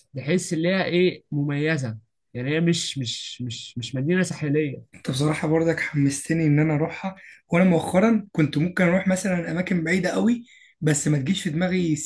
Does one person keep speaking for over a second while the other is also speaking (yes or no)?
no